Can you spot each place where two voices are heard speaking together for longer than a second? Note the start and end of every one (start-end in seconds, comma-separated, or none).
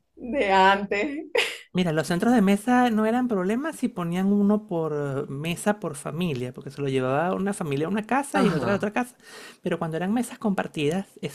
none